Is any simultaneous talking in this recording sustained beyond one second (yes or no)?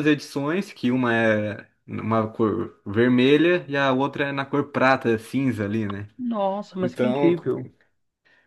no